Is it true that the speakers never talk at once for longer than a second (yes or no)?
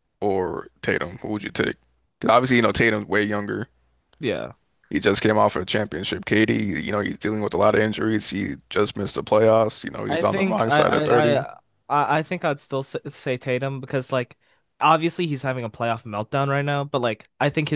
no